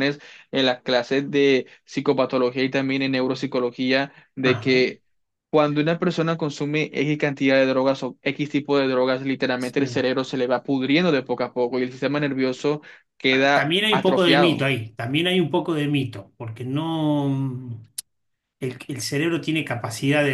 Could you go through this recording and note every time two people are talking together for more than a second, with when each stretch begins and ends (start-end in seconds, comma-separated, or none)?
13.3-14.7